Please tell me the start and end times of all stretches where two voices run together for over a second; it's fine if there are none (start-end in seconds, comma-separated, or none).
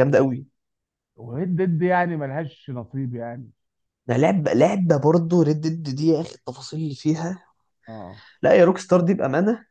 none